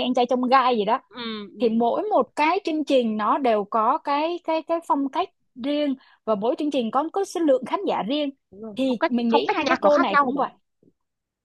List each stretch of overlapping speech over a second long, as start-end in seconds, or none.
8.8-10.4